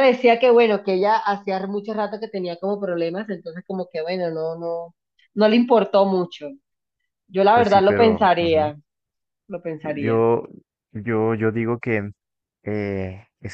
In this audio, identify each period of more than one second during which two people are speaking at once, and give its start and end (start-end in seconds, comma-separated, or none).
7.5-8.7